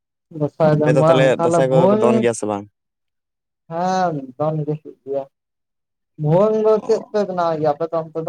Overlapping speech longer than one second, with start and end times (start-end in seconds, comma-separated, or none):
0.7-2.3